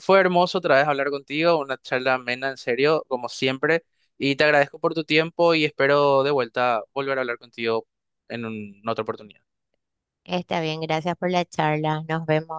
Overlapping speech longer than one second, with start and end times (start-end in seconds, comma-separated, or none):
none